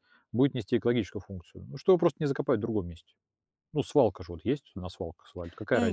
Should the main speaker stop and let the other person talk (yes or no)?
yes